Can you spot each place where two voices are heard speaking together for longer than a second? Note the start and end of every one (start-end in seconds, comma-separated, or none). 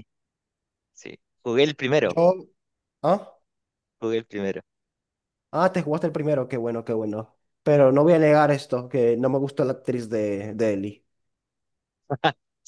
none